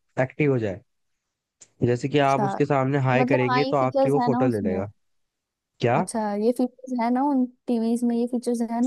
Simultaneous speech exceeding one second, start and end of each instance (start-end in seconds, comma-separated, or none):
3.2-4.8